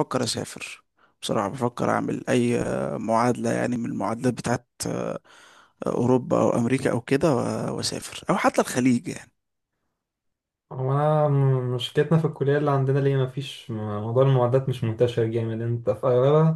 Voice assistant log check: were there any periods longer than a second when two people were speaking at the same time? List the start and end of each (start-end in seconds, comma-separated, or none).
none